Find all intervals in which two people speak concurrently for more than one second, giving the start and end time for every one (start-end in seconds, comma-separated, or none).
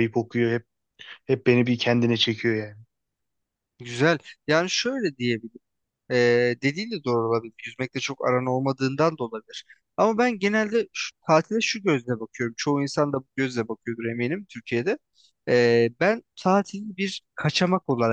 none